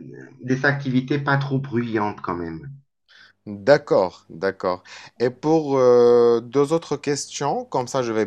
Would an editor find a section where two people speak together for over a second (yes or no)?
no